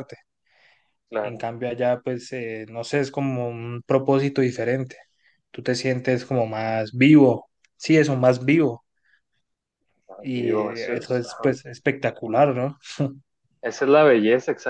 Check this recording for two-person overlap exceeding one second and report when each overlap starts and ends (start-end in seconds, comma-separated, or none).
10.2-11.6